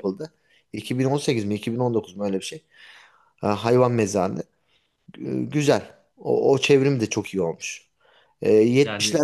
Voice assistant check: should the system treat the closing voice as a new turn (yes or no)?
no